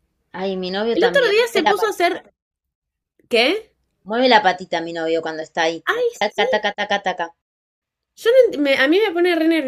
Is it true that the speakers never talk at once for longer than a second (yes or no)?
no